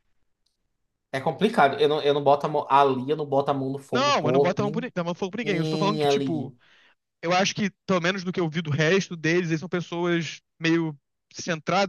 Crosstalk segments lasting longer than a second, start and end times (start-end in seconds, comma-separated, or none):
3.9-6.5